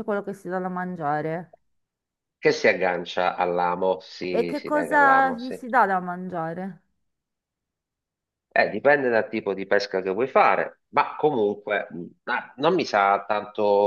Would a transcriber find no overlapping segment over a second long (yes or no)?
no